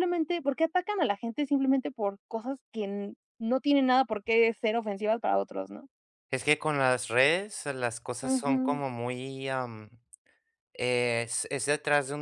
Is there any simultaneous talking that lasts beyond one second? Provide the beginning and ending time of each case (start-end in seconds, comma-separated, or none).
none